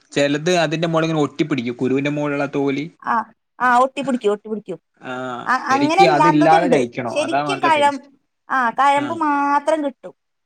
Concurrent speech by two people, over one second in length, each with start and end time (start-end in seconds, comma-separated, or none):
5.5-7.8